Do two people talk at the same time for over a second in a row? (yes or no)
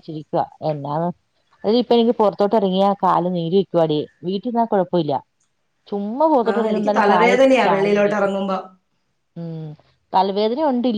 yes